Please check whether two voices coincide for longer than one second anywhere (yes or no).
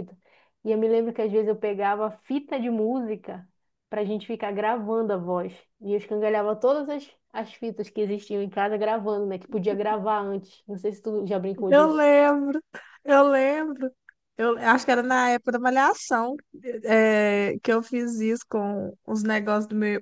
no